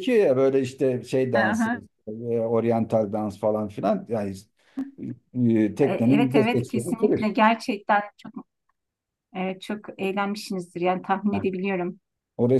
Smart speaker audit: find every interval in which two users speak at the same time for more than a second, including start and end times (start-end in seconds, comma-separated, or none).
5.8-7.3